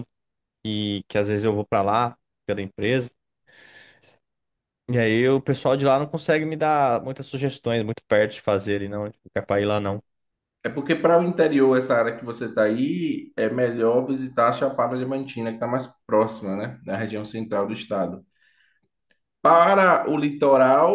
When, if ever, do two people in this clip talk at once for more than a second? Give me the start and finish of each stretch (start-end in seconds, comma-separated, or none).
none